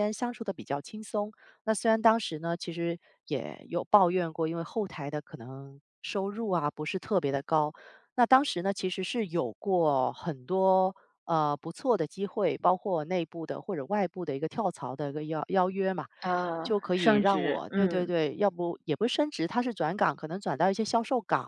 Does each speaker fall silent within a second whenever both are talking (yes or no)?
no